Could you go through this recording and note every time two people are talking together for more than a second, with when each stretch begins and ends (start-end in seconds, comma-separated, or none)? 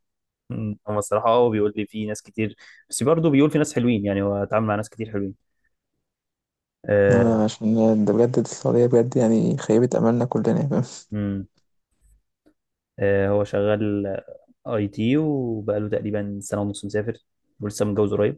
none